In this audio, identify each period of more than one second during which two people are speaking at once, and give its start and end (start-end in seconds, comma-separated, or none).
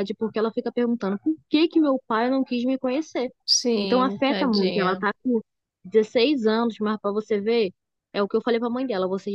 3.8-5.0